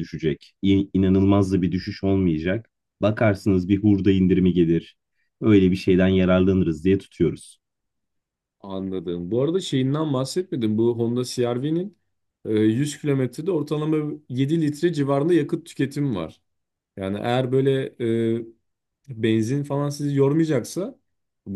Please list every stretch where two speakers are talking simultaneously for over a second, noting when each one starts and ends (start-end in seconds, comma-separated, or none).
none